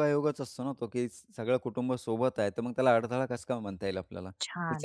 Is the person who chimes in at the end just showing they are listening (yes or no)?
no